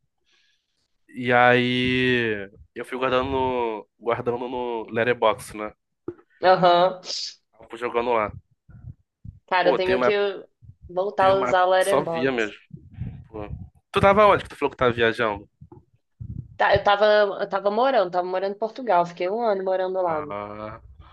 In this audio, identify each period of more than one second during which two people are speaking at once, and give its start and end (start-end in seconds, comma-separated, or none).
11.2-12.5